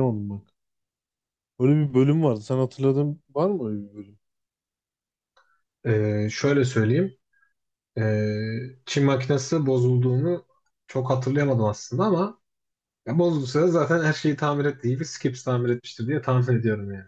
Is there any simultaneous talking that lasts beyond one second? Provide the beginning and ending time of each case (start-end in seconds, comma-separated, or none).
none